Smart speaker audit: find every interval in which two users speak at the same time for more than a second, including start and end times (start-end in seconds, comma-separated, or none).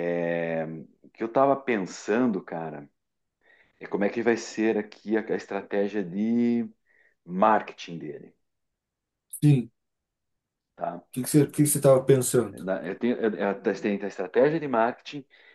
none